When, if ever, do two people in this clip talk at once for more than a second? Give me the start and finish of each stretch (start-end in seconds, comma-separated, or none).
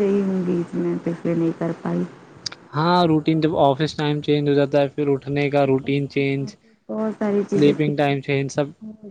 none